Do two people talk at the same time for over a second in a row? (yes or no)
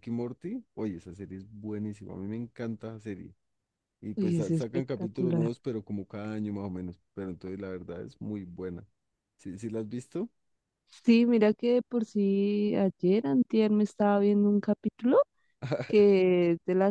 yes